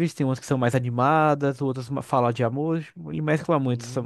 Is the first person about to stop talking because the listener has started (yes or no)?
yes